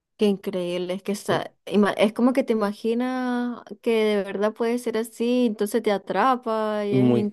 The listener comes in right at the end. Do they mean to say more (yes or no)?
yes